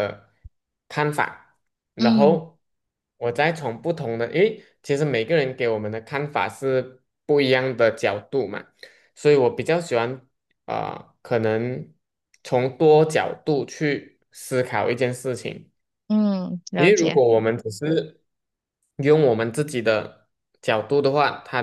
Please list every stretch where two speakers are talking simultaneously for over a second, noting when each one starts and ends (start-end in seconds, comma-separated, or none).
none